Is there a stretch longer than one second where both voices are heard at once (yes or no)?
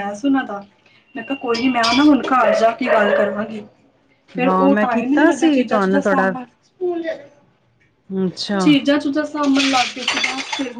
yes